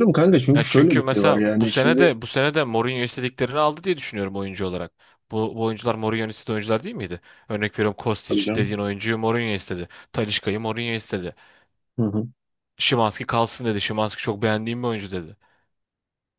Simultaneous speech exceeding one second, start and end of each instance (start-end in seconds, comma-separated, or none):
0.5-2.1